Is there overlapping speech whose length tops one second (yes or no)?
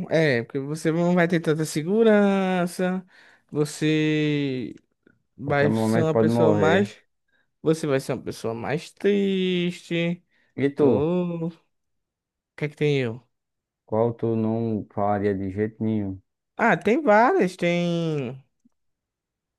yes